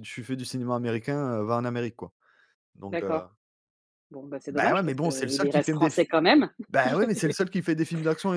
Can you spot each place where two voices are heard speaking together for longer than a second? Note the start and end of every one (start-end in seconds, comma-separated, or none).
4.5-6.0